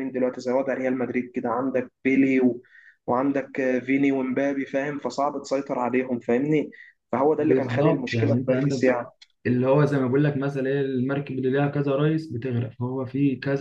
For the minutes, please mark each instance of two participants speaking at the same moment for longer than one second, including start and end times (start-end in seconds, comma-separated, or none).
7.4-9.0